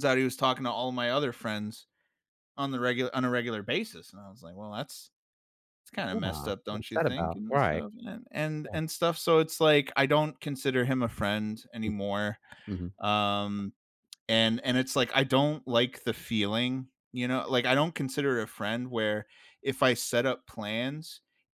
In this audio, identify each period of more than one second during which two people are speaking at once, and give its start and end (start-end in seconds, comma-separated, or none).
6.1-7.8